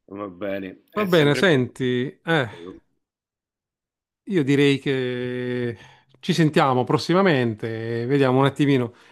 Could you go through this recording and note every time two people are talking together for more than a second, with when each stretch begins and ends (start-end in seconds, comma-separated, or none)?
0.9-2.5